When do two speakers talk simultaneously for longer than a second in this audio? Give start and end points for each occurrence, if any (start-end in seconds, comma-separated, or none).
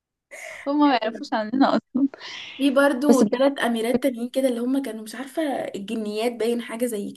none